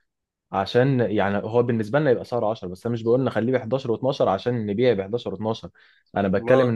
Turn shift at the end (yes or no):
no